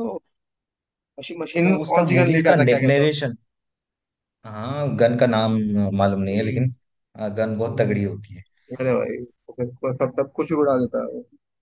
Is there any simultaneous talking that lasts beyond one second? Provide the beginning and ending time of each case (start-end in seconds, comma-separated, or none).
1.6-3.1